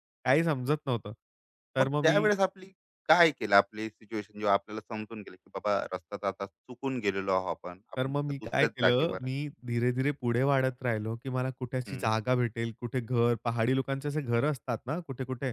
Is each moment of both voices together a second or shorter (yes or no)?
no